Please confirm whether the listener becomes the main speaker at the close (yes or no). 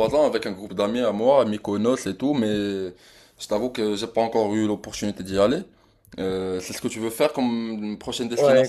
yes